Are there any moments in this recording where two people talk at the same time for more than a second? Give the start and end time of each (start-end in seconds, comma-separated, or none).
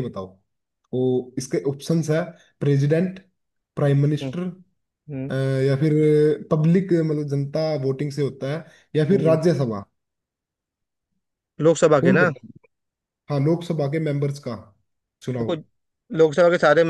none